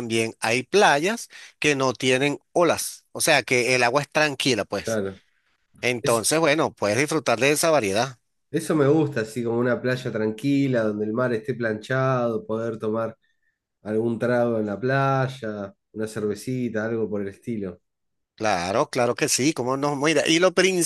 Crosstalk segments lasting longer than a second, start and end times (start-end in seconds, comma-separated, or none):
none